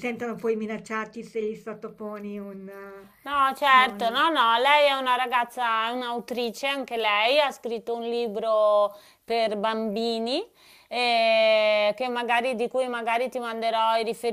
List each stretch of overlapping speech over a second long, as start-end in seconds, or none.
none